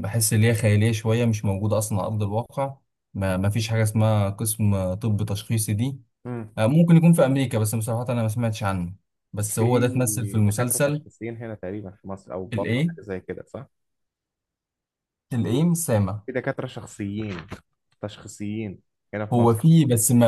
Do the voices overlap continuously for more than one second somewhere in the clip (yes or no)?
yes